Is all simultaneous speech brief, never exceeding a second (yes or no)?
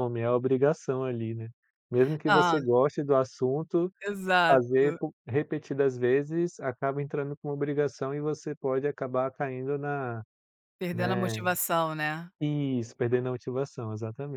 yes